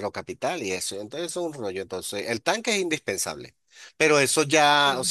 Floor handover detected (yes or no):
no